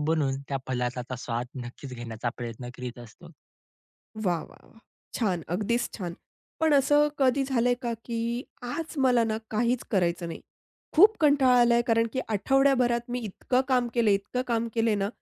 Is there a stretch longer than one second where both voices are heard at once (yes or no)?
no